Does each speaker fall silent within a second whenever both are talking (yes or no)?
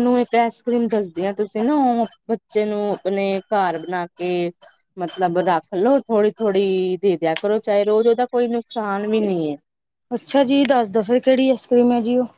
yes